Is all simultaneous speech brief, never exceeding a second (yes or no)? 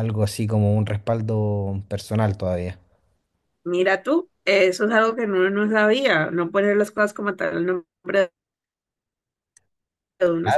yes